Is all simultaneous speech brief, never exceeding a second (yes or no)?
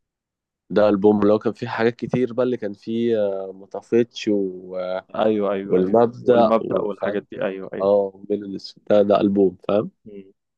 no